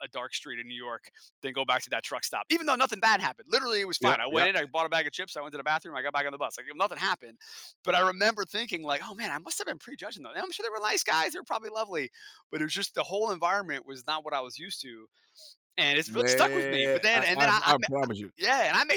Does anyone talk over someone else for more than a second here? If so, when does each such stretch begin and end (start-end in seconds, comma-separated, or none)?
16.1-17.7